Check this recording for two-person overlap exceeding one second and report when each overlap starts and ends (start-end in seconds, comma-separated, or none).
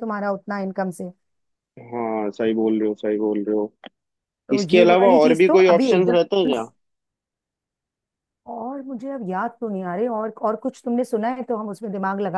4.5-6.5